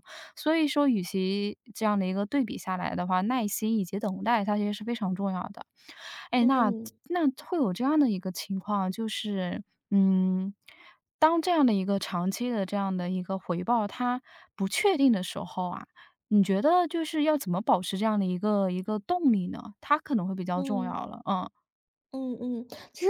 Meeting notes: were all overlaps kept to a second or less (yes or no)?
yes